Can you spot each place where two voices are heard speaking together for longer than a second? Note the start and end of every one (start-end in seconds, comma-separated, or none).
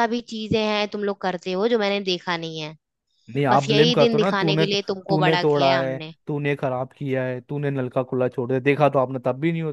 3.5-6.1